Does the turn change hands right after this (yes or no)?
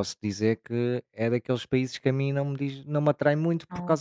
no